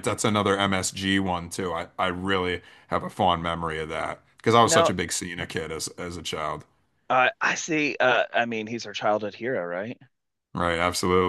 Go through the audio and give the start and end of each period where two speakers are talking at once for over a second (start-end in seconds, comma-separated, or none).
none